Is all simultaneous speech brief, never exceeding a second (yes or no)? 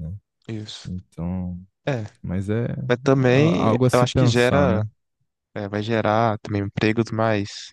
no